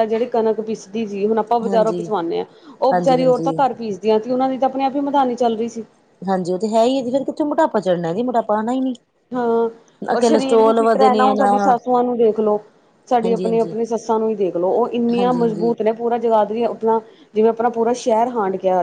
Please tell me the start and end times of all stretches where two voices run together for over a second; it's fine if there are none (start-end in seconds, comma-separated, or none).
10.0-11.5